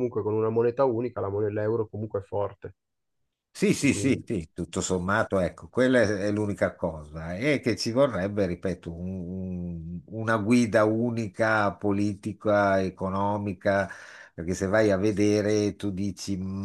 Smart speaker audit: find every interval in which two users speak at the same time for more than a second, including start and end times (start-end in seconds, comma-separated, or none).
none